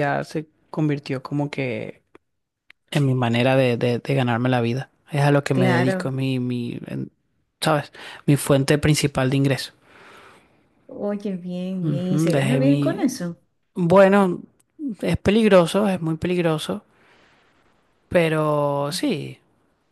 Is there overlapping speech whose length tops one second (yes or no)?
yes